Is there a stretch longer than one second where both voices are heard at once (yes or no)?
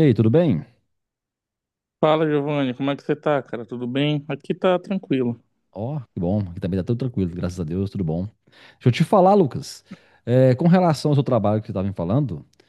no